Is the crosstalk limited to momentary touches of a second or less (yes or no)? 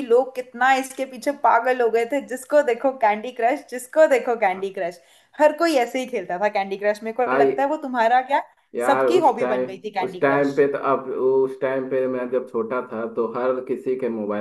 no